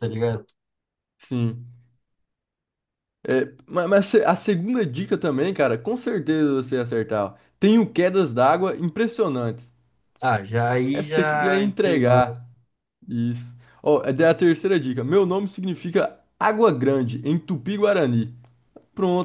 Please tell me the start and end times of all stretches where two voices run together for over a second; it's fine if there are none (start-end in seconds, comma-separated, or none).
10.9-12.2